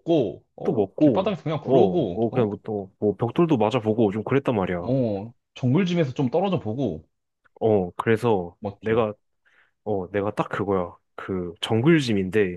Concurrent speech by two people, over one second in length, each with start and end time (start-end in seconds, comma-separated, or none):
0.6-2.5